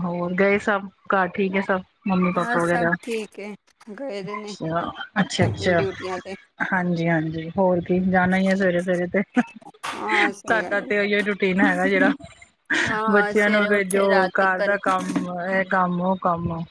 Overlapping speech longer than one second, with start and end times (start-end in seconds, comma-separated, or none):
13.1-14.8